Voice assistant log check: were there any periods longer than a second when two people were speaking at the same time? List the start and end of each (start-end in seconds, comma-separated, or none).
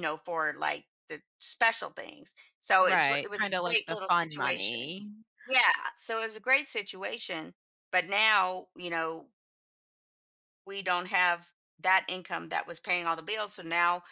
2.8-5.0